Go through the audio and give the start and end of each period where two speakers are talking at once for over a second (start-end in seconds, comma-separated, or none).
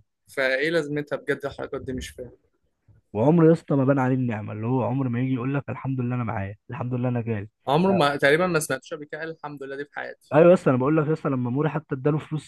none